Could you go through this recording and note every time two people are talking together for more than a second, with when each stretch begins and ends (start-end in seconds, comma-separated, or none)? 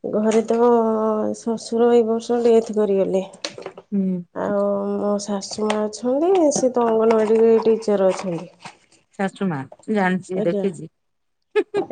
none